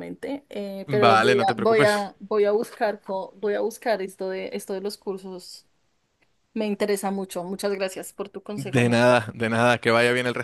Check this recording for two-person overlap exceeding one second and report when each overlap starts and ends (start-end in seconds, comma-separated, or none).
0.8-2.1